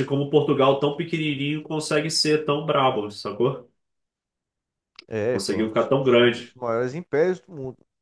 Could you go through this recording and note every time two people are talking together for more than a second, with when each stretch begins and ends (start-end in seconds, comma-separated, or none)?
5.3-6.5